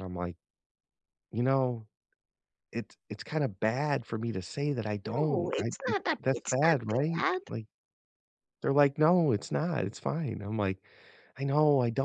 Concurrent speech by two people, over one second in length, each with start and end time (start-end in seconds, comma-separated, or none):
5.0-7.4